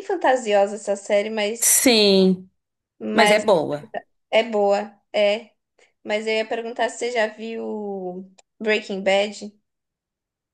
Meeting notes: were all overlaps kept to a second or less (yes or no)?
yes